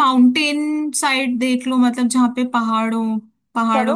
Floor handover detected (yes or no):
no